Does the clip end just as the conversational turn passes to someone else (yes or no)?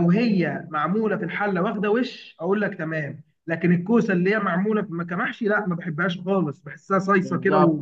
yes